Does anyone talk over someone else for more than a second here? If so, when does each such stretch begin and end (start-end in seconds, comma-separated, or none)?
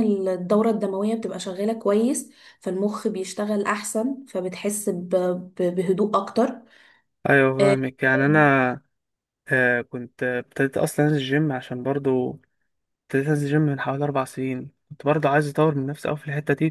none